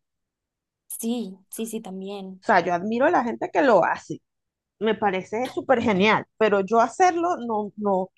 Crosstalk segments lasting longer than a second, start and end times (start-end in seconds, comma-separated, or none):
none